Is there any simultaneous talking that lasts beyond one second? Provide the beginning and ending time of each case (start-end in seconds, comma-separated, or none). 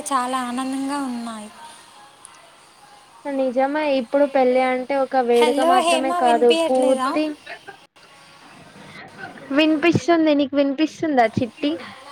5.4-7.1